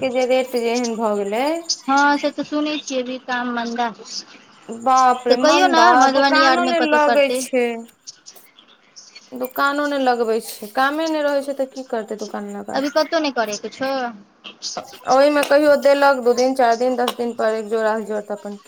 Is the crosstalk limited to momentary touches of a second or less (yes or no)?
no